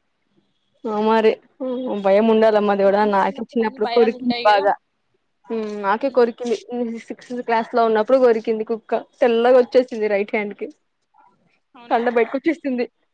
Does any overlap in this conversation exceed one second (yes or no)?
yes